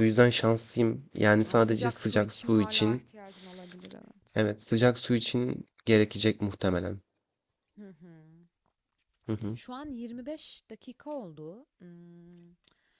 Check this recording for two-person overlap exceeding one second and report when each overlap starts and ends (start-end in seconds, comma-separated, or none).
1.5-3.0